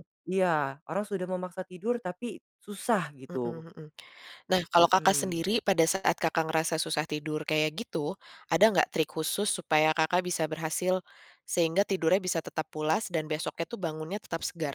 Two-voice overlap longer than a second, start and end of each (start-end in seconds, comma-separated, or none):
none